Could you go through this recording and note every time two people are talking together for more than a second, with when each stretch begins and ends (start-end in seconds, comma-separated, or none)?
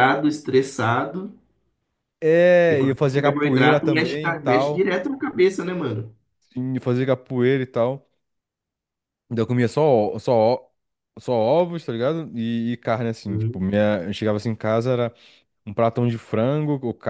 2.6-4.9